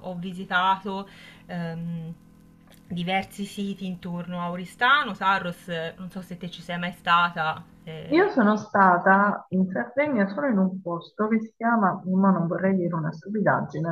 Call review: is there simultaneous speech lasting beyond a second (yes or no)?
no